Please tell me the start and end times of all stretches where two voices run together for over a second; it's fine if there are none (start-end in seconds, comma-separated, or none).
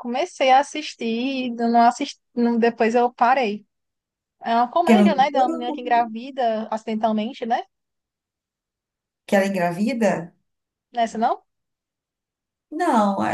none